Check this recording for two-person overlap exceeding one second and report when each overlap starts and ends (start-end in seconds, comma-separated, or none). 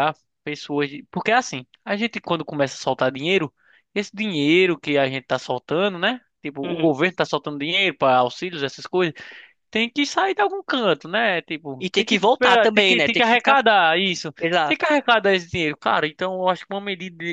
11.8-13.6